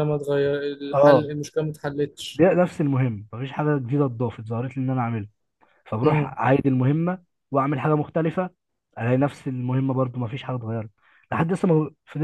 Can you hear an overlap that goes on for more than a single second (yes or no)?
no